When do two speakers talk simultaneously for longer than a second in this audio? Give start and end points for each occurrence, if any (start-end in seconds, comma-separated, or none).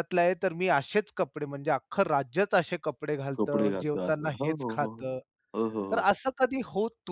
3.4-5.0